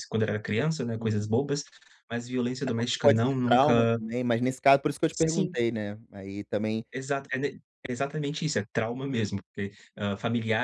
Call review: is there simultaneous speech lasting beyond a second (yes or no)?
yes